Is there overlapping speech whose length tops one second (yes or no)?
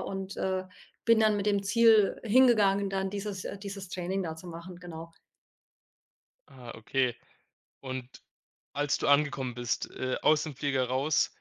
no